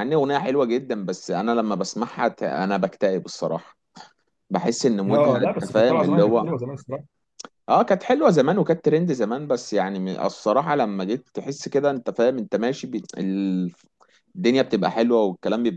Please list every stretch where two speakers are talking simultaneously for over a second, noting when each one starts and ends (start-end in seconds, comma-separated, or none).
5.1-6.5